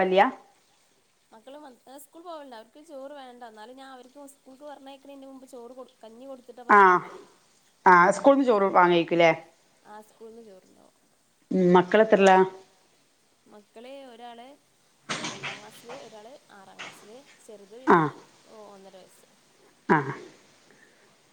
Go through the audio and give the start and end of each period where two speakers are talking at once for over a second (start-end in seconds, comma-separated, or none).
none